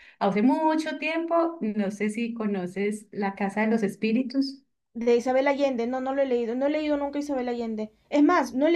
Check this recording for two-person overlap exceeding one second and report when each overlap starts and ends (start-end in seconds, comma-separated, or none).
none